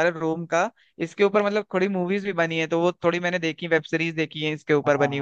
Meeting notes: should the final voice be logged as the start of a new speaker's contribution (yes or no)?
yes